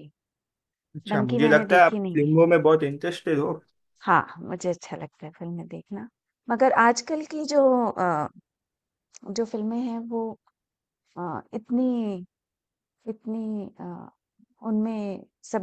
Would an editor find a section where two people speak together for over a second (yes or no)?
yes